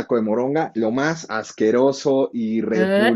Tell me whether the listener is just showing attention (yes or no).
yes